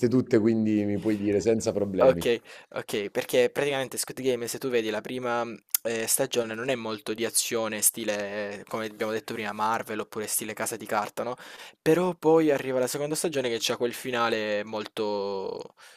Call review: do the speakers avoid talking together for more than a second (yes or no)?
yes